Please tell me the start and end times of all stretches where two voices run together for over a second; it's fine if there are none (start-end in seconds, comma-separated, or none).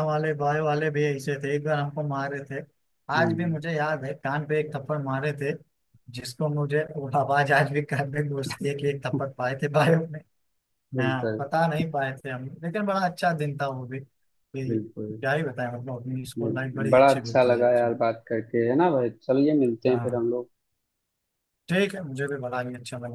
16.4-17.9